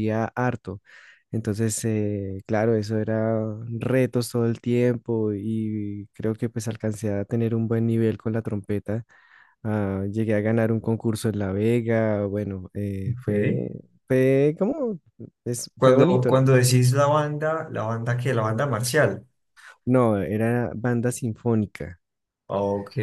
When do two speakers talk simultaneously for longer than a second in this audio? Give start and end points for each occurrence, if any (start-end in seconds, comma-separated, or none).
none